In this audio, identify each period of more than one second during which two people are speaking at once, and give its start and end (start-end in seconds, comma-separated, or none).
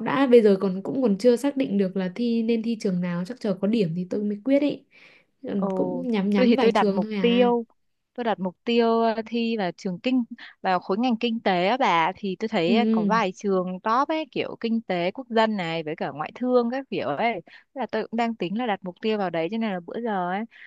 5.5-7.5